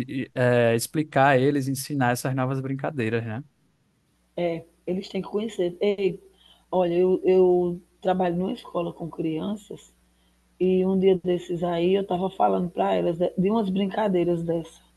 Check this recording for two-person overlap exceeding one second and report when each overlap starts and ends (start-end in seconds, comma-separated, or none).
none